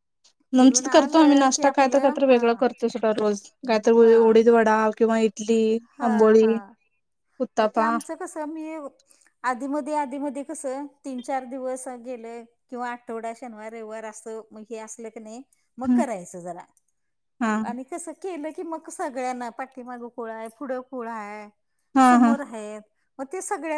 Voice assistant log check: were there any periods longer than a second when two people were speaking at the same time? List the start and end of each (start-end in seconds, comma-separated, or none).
0.6-2.4